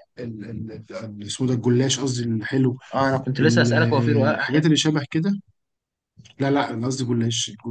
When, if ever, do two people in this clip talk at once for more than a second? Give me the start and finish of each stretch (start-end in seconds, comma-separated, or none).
3.4-4.7